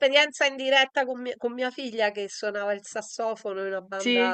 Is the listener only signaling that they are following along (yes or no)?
yes